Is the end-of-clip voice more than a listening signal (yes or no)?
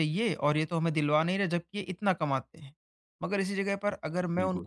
no